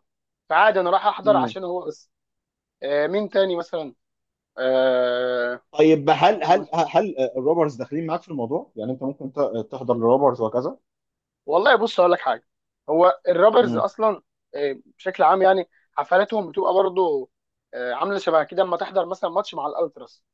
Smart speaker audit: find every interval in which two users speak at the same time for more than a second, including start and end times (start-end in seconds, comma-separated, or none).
none